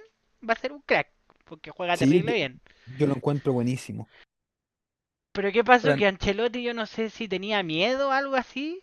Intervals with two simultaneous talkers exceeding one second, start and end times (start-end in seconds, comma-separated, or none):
none